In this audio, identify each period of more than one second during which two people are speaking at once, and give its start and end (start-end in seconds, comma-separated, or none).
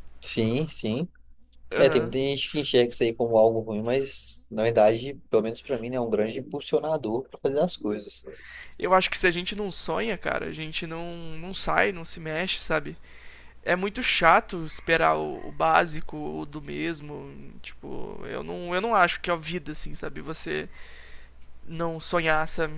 none